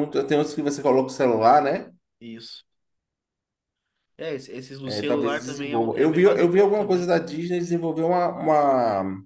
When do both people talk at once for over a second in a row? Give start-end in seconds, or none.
4.8-7.1